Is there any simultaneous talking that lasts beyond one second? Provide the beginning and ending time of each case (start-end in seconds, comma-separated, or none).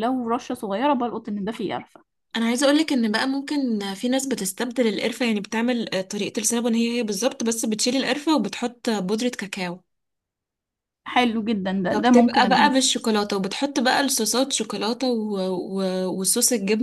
11.9-13.1